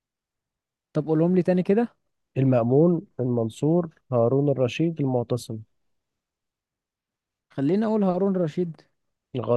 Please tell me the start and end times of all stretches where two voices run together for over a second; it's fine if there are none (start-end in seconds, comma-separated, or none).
none